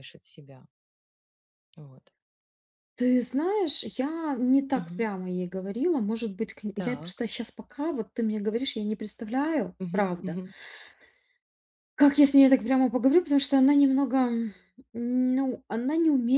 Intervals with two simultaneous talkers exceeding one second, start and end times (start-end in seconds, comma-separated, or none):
none